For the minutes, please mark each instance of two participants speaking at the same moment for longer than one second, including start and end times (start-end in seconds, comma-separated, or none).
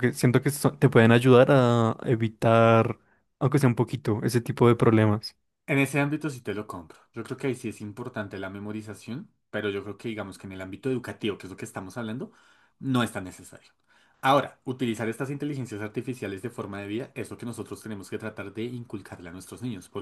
none